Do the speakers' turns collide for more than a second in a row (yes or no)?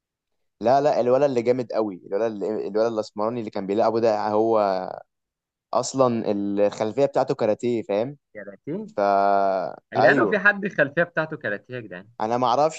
no